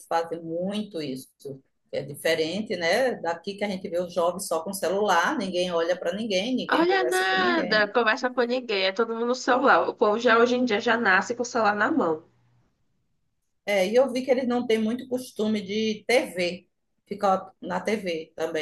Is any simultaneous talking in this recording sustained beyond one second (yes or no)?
yes